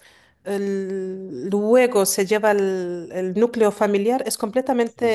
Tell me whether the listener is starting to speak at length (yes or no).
no